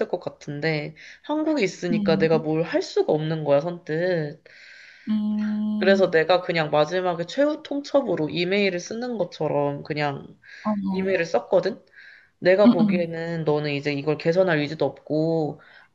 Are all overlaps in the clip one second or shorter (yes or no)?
yes